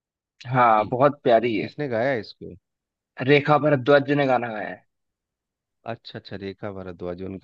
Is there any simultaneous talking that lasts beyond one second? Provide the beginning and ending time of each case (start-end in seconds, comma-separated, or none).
none